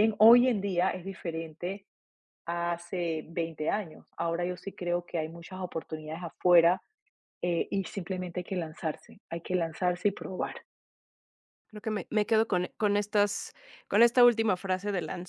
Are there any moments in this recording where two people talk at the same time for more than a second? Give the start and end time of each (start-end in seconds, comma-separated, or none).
none